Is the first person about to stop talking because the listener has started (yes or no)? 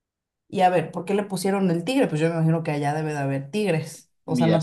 yes